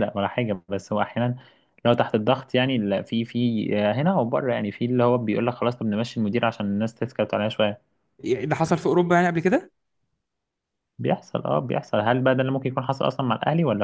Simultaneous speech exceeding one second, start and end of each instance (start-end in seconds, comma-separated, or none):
none